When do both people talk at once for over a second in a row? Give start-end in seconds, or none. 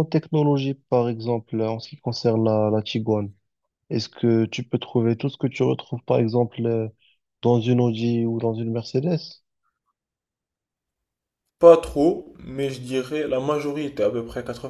none